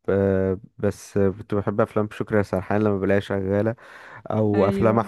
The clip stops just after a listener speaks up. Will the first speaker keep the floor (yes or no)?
yes